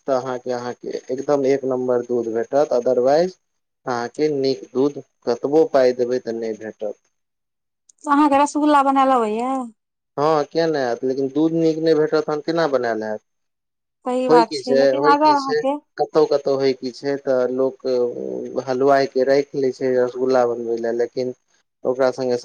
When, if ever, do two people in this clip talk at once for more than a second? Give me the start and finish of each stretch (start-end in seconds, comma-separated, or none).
14.3-15.6